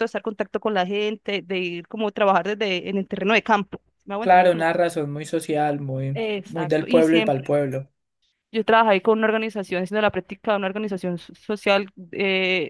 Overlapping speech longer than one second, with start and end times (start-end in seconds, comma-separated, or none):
6.1-7.5